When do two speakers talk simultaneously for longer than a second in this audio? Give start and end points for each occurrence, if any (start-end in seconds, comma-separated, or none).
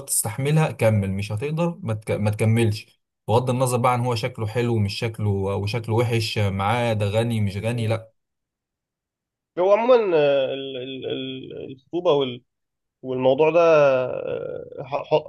none